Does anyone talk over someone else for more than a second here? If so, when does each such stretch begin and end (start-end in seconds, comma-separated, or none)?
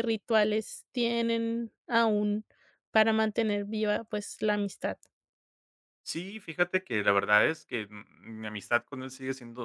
none